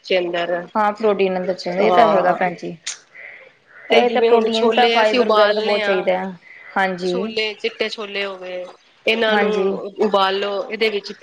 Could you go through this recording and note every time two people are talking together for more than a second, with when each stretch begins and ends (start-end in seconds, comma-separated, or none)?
4.0-6.0